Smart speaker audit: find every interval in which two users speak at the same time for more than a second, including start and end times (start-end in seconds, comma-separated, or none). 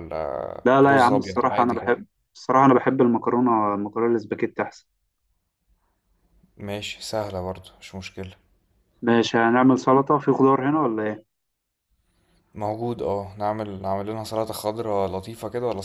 0.7-2.0